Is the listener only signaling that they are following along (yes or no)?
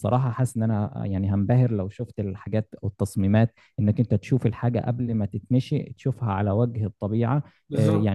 yes